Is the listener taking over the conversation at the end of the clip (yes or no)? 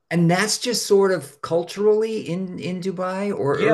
yes